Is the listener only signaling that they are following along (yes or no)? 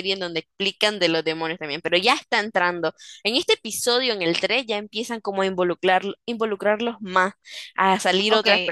no